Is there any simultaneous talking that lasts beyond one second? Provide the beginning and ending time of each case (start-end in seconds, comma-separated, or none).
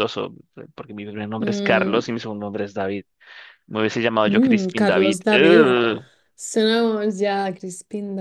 4.2-5.8